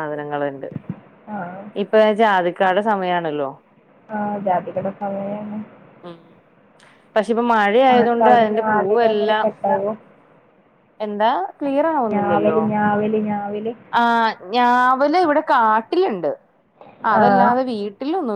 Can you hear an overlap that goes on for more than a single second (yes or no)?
yes